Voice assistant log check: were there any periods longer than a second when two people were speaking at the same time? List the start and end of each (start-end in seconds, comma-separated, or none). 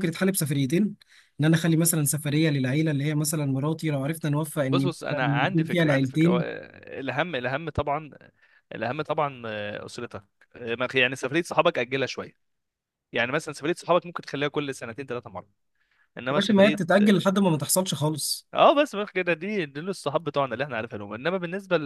4.7-6.5